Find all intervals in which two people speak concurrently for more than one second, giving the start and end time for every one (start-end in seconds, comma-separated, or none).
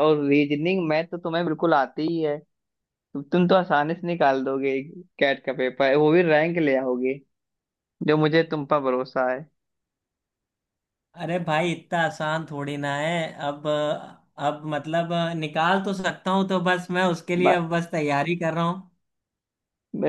none